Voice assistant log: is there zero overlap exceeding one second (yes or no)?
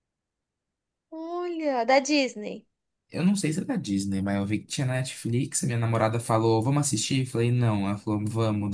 yes